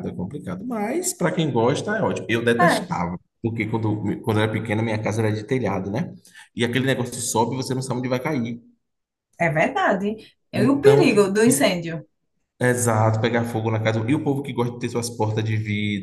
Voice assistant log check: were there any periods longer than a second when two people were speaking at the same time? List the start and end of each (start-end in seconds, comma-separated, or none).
10.5-11.7